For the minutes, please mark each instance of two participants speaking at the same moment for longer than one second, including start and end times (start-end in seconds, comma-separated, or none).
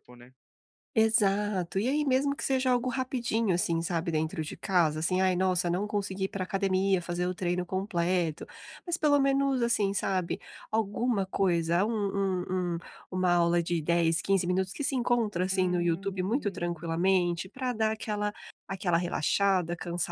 15.5-16.9